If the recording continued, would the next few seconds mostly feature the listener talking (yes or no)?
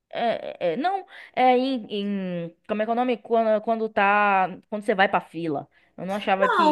yes